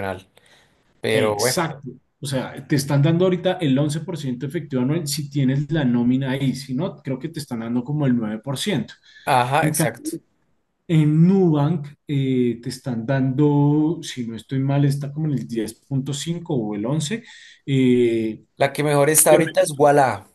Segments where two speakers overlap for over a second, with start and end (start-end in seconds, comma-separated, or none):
none